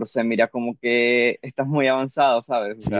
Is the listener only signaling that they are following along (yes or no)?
no